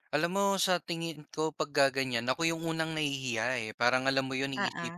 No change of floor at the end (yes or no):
yes